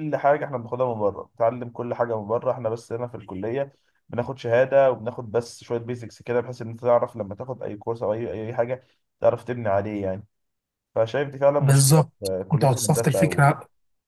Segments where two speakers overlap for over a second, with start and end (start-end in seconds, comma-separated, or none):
11.6-13.6